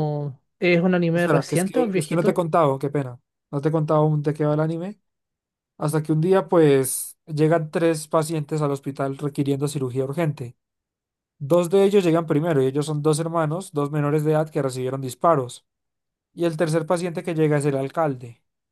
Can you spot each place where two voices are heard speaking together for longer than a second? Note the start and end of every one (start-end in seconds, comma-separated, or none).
1.1-2.4